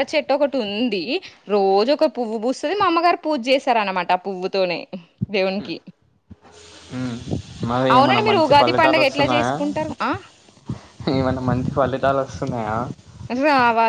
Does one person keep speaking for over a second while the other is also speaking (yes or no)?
yes